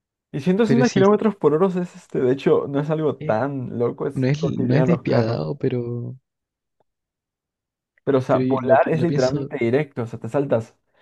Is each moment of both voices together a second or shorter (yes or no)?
no